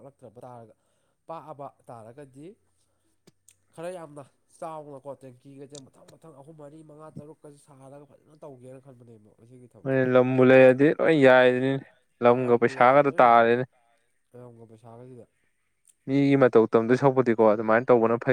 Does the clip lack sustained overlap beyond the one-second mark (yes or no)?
yes